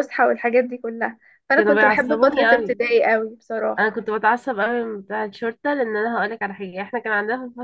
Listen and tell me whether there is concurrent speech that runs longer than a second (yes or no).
yes